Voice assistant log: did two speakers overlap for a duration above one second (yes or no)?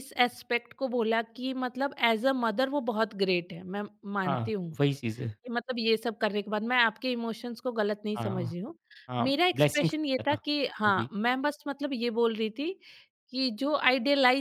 yes